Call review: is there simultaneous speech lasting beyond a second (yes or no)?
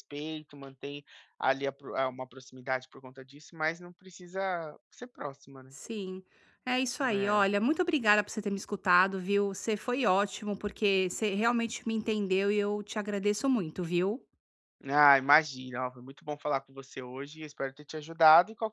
no